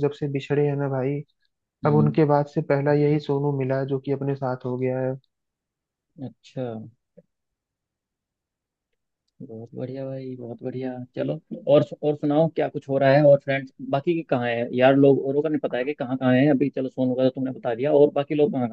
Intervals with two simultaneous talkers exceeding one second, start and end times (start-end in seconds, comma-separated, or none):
none